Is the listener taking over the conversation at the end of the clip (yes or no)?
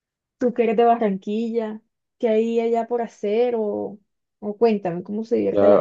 yes